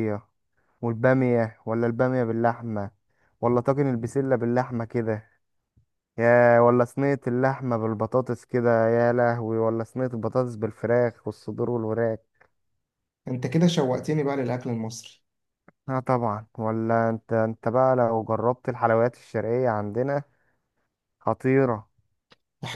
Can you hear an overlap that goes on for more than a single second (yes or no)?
no